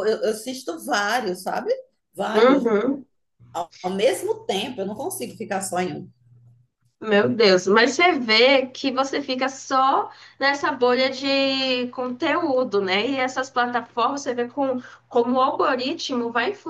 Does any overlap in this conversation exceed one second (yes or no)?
no